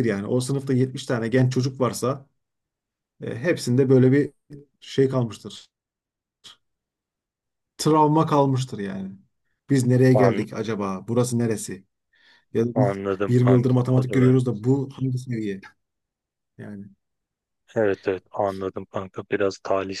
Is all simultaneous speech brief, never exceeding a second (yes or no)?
no